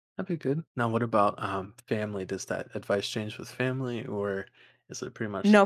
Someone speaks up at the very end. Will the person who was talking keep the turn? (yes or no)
no